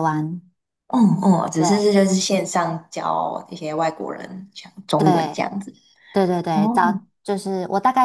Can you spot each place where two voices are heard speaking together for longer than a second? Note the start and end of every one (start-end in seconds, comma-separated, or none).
none